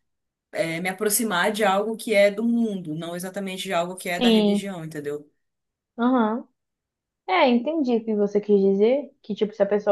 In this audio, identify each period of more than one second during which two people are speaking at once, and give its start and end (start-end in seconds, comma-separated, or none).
none